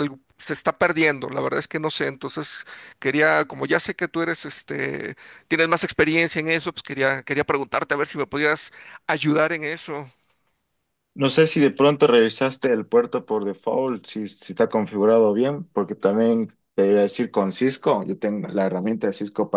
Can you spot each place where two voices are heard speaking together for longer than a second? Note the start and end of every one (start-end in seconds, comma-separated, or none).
none